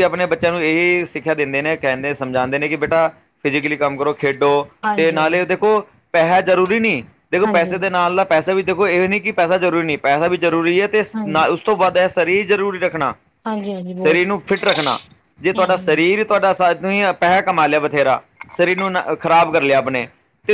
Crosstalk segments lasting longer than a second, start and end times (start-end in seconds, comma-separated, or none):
none